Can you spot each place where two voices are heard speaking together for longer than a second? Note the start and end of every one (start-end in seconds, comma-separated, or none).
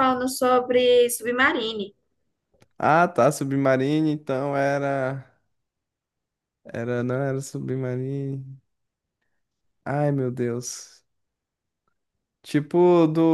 none